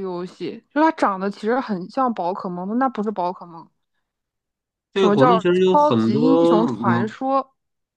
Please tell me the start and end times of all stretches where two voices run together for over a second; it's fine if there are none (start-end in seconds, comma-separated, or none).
4.9-7.1